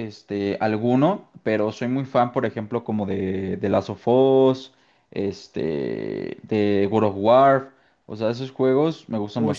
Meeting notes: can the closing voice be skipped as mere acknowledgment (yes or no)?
no